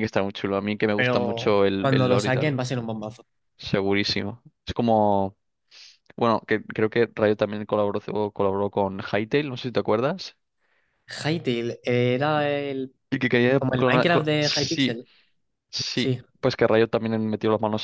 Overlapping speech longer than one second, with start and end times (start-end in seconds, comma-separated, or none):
0.9-2.5, 13.6-15.0